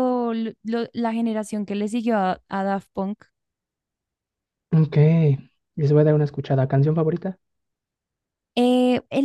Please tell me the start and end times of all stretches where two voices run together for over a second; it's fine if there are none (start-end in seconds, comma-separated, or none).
none